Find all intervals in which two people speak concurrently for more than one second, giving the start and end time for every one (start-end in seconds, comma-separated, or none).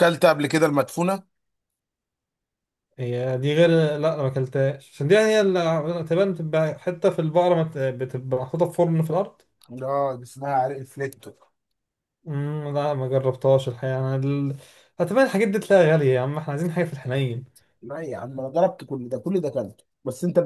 none